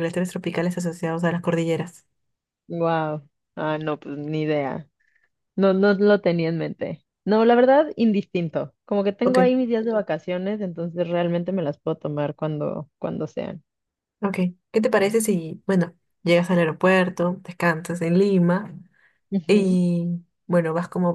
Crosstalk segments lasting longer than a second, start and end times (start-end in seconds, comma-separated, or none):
none